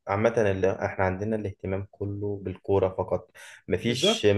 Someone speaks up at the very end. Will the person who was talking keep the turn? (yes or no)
yes